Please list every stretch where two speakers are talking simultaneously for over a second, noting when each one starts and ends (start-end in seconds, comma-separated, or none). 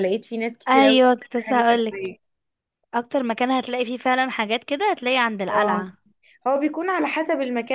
0.7-2.1